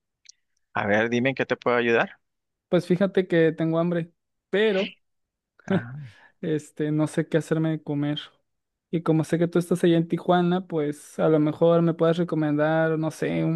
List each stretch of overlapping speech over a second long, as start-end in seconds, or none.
none